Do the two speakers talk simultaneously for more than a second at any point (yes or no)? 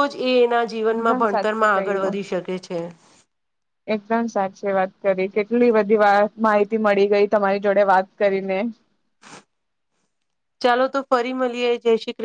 yes